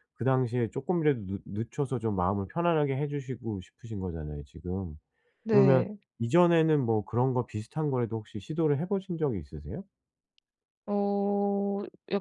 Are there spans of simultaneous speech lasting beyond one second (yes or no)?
no